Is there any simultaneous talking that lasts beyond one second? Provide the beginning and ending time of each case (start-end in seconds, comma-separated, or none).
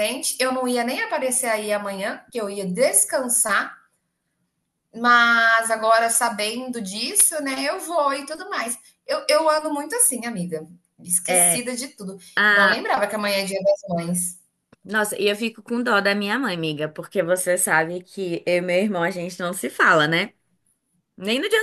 none